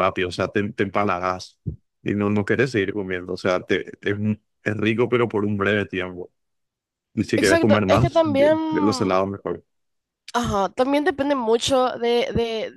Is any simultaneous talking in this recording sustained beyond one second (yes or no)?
yes